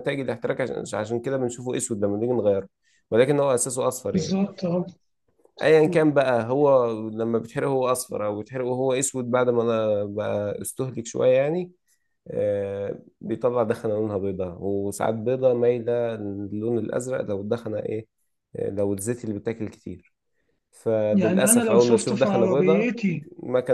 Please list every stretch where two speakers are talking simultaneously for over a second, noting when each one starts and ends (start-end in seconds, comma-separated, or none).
21.1-22.9